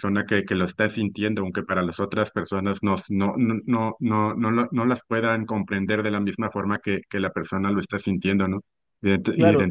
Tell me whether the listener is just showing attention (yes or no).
yes